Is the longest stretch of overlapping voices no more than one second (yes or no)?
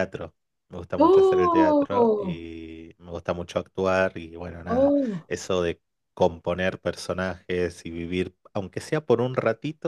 no